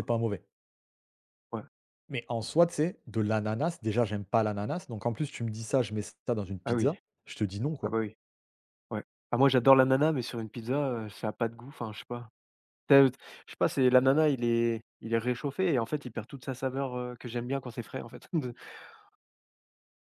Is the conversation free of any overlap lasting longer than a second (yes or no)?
yes